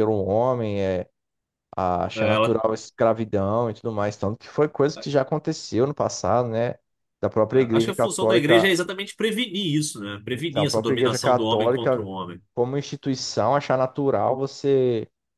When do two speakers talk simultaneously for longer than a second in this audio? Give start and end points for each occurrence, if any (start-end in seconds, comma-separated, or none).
7.5-8.8, 10.3-12.1